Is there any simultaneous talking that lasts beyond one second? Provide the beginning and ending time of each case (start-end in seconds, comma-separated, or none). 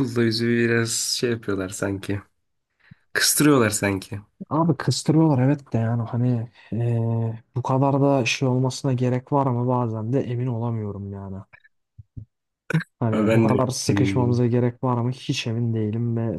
13.1-14.4